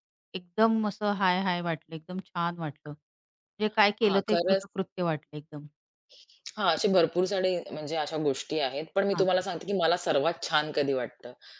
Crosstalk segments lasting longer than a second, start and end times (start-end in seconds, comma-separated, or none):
none